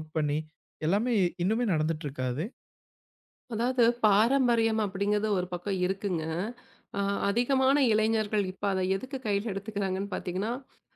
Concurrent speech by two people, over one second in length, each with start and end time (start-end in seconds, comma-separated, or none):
none